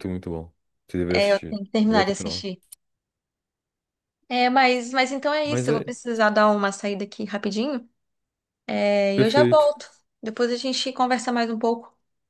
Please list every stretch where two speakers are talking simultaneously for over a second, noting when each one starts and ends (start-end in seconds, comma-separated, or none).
1.1-2.5